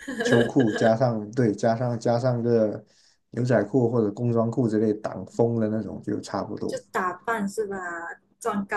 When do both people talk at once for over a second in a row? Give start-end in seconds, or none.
none